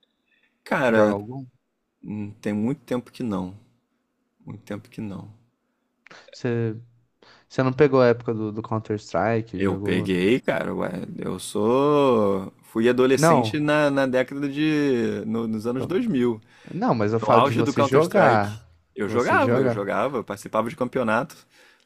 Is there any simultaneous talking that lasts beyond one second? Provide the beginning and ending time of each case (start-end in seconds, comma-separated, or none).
17.2-19.9